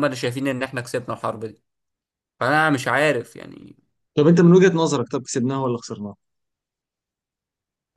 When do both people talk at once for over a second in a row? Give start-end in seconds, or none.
none